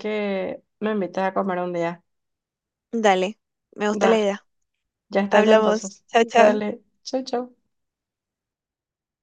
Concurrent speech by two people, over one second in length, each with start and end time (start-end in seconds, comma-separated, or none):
5.3-6.6